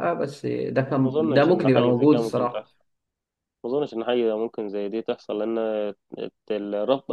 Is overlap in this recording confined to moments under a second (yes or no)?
no